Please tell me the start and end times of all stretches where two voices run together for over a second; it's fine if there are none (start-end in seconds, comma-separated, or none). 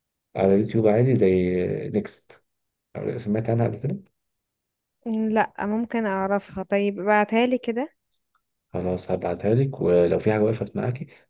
none